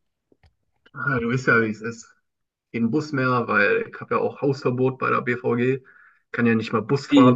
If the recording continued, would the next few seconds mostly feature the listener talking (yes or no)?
yes